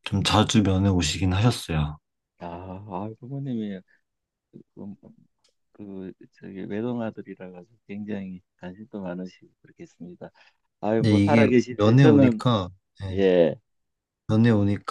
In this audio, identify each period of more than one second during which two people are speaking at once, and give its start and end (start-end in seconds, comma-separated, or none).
11.0-12.4